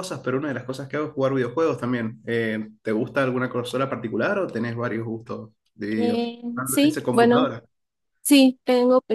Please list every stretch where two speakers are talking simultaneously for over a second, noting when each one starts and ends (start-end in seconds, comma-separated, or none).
6.0-7.5